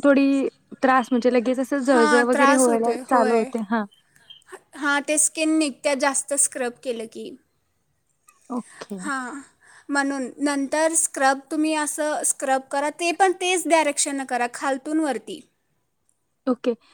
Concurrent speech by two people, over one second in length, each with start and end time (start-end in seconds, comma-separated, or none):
1.9-3.4